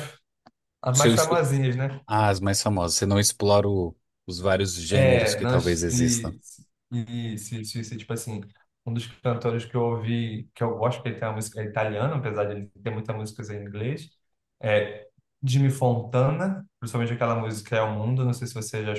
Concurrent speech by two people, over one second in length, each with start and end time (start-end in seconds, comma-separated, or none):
4.9-6.4